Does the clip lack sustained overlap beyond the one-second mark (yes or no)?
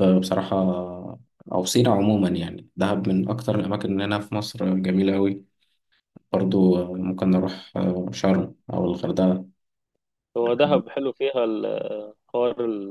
yes